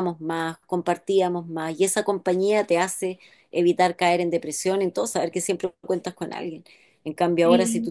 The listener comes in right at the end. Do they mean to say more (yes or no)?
no